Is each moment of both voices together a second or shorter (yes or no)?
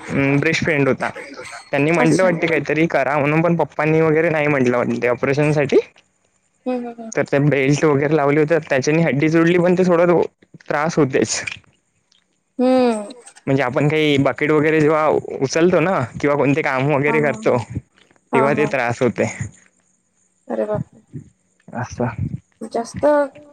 yes